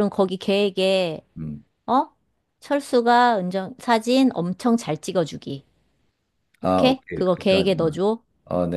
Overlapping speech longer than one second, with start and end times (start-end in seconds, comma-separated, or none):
6.6-8.0